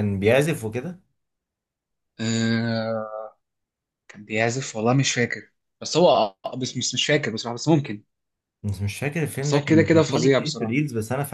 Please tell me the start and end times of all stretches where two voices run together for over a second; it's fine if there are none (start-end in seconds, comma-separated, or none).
9.4-10.8